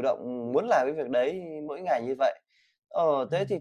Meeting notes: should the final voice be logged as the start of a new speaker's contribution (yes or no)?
no